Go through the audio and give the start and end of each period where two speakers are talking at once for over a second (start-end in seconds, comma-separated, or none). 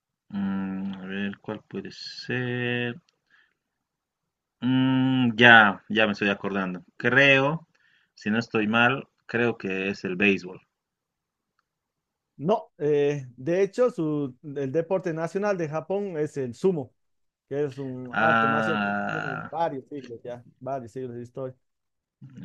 18.1-19.5